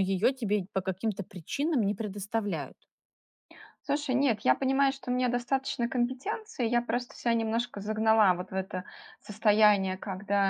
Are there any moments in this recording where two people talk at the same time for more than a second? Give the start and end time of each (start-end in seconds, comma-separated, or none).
none